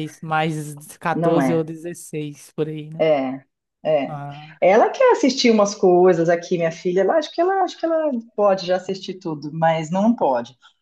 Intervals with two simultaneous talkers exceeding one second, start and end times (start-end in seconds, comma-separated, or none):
none